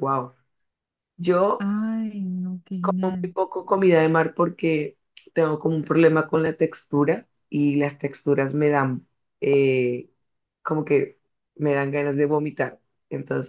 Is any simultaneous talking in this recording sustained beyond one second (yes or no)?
no